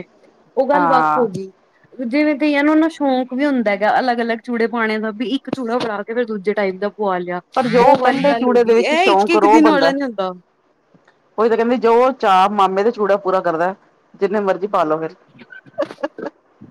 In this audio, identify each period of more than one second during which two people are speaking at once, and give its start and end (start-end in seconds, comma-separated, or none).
7.9-9.9